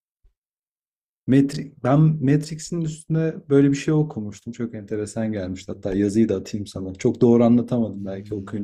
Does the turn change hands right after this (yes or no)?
yes